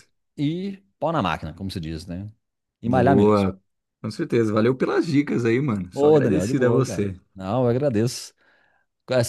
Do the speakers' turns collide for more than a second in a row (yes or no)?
yes